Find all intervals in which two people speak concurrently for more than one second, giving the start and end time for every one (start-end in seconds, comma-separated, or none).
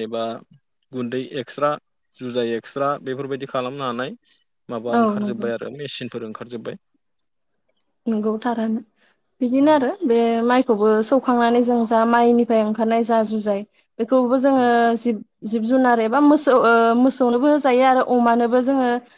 none